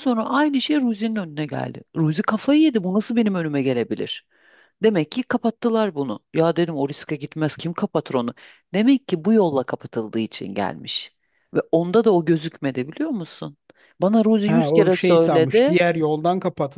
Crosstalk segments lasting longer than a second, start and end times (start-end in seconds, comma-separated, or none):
14.5-15.7